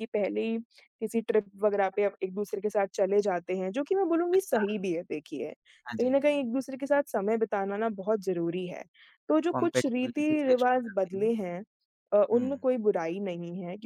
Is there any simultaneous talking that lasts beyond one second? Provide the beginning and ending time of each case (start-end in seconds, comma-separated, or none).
9.5-11.3